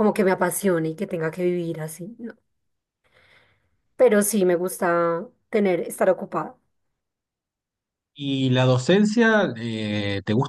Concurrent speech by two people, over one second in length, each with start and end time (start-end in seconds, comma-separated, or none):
none